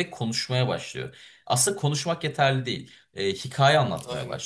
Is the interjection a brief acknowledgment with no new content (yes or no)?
yes